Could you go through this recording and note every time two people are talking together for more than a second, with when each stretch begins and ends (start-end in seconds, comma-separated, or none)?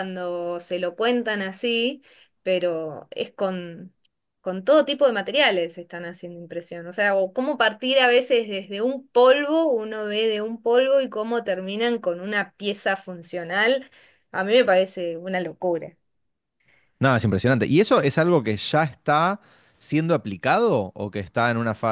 none